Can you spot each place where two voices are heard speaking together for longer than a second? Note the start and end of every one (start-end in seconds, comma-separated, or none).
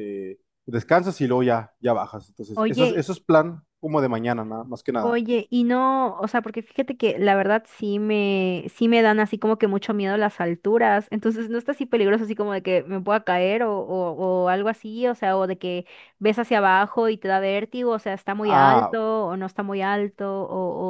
none